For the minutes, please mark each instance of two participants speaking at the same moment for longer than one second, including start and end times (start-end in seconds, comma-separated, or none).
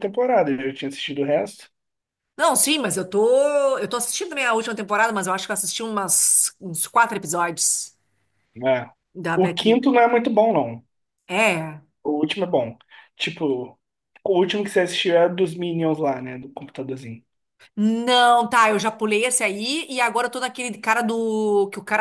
none